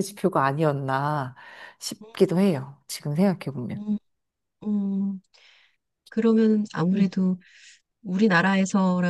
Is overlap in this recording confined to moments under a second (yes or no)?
yes